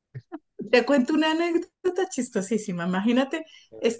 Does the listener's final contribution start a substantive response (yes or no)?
no